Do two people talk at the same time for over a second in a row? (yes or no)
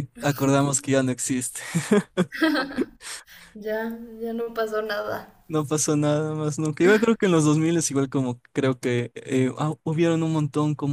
no